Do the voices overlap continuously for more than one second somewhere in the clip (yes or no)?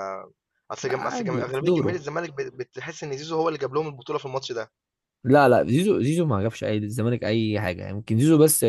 yes